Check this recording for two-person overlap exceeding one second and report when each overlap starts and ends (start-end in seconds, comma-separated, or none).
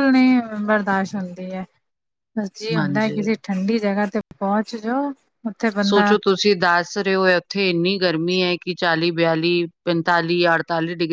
none